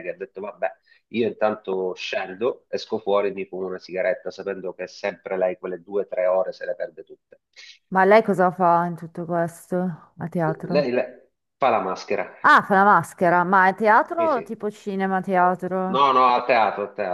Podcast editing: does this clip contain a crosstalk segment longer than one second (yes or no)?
no